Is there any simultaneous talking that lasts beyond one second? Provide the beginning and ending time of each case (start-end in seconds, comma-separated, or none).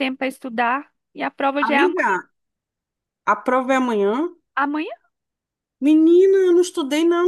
none